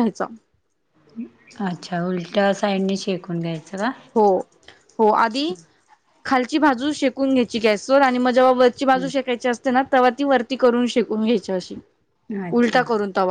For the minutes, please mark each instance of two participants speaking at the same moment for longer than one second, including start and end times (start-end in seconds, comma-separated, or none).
none